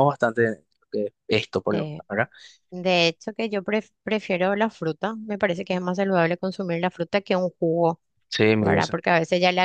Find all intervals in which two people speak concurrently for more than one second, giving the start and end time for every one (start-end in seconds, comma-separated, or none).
none